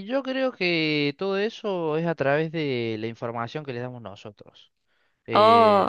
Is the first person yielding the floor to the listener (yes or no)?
no